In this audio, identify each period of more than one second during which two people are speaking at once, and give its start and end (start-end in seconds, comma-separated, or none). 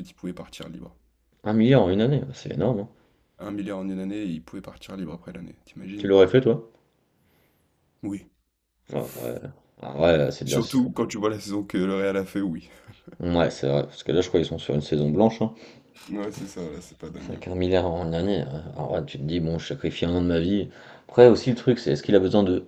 none